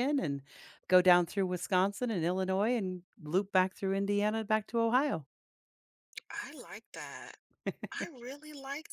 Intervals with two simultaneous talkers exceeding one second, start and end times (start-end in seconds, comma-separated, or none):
none